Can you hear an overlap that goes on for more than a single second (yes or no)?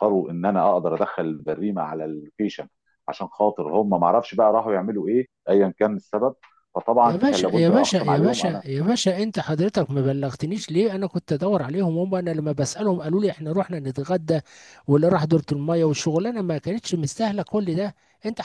yes